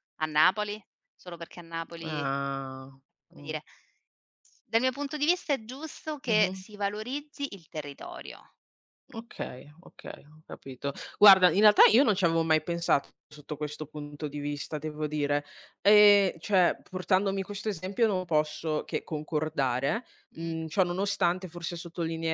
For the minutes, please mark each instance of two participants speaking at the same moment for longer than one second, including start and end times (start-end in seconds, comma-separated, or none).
none